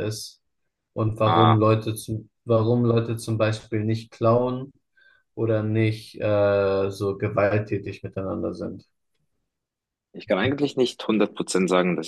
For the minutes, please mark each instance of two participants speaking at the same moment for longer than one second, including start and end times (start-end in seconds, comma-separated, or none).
none